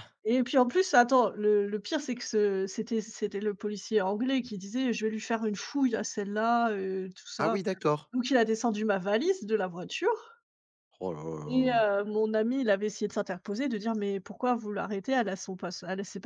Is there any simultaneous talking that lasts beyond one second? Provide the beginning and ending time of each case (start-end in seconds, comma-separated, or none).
none